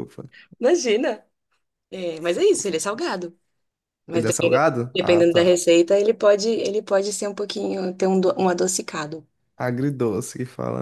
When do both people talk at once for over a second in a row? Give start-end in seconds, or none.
4.1-5.6